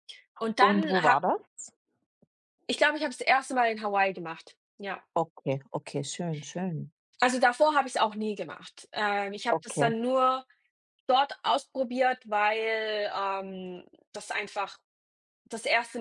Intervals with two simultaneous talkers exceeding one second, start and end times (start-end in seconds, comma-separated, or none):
none